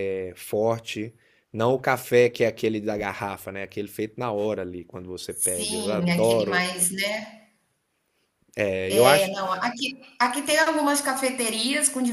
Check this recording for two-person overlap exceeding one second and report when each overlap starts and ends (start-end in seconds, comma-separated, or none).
5.3-6.7